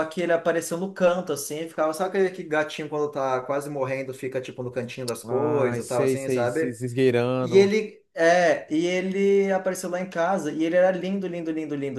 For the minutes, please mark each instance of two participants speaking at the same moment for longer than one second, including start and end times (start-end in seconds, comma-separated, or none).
5.2-6.8